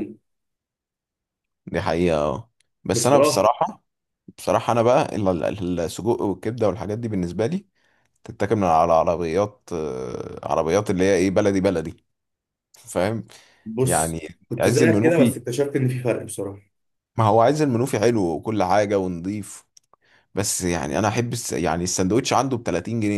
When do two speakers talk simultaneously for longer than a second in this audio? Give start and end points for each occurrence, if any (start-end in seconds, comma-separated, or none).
13.8-15.4